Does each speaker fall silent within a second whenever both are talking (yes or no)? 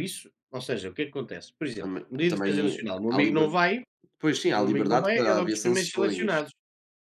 no